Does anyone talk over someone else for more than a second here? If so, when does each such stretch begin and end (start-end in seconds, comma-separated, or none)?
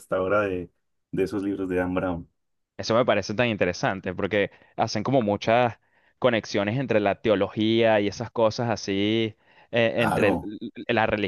none